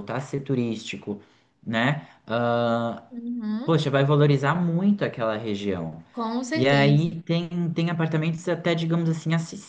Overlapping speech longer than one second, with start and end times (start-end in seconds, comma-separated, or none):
none